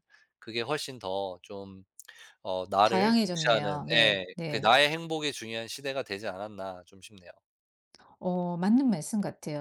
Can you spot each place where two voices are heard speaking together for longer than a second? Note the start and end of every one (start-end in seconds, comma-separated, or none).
2.9-4.8